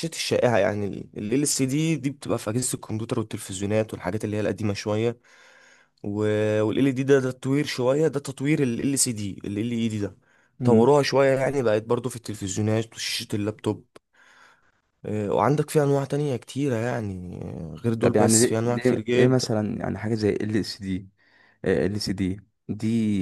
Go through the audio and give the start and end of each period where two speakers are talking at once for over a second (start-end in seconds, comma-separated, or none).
18.0-19.5